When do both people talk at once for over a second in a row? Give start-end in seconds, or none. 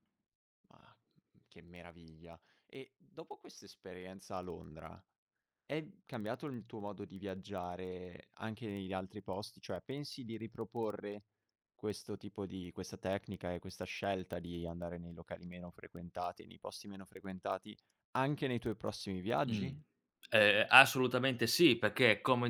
none